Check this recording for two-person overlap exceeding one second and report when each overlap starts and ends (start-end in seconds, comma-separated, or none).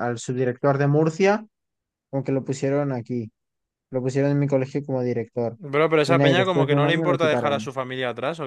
6.0-7.7